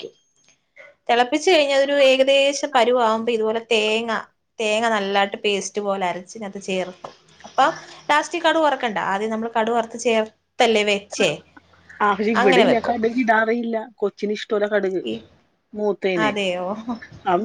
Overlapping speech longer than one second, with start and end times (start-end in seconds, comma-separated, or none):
none